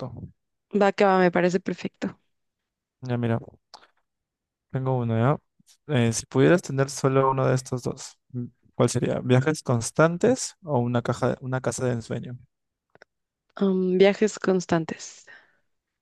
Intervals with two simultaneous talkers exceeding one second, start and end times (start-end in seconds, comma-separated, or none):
none